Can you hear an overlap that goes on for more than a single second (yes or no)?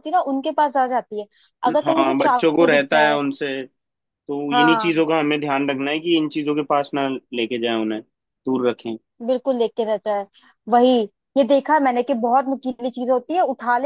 yes